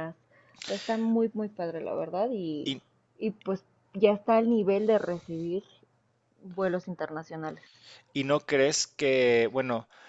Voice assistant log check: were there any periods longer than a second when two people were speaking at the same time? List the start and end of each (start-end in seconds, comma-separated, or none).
none